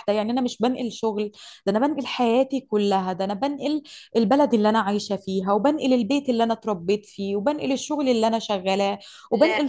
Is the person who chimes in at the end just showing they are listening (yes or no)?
yes